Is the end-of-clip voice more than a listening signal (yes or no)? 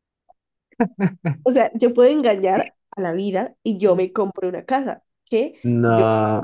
no